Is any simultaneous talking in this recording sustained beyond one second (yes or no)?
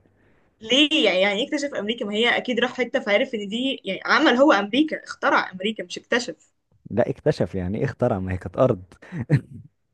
no